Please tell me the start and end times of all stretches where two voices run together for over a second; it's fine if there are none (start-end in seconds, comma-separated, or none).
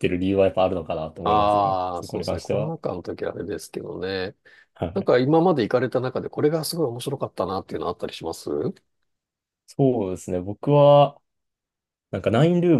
1.2-2.8